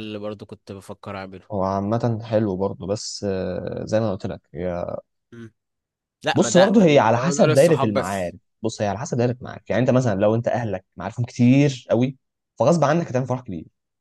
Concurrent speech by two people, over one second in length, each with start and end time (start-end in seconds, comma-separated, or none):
6.3-8.4